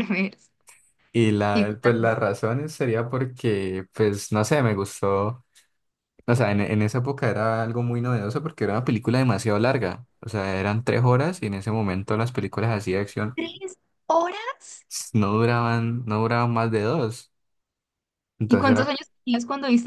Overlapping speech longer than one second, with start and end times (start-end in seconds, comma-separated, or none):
none